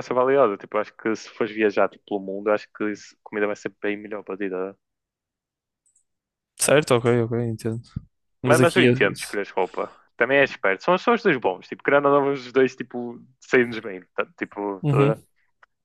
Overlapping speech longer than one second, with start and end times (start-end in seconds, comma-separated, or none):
none